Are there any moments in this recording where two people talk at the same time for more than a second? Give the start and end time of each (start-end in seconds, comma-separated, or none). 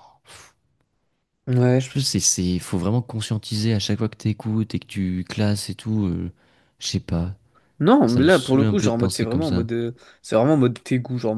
8.1-9.7